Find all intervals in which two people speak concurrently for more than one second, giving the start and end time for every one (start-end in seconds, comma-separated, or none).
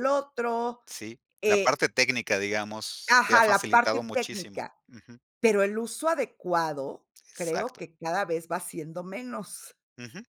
3.1-4.7